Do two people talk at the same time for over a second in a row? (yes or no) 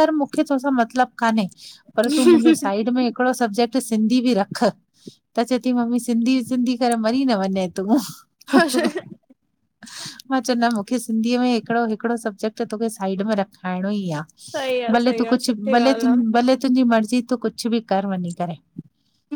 yes